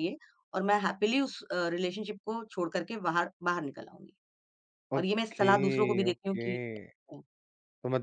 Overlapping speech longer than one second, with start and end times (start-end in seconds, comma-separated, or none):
5.0-6.6